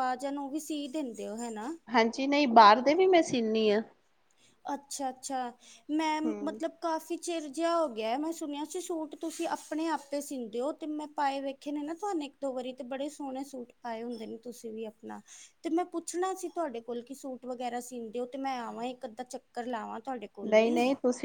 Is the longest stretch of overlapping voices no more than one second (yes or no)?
yes